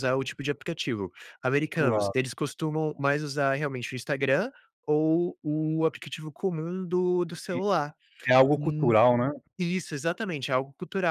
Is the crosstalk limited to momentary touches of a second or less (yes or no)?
yes